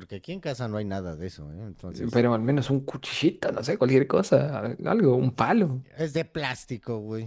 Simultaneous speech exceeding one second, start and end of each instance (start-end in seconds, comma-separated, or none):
none